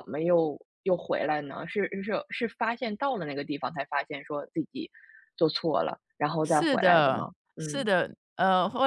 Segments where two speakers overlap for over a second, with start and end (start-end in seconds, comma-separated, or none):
6.4-7.9